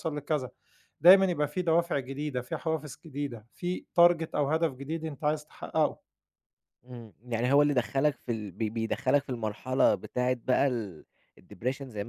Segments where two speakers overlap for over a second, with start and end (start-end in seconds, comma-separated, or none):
none